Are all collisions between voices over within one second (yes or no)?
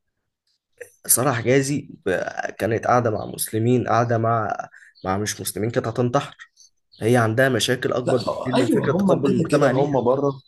no